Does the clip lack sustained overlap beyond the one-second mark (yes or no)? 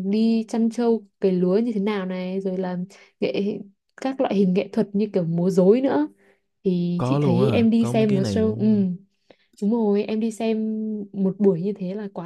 no